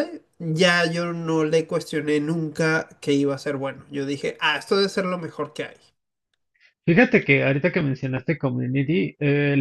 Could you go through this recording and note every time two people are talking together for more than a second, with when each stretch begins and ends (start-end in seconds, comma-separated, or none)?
none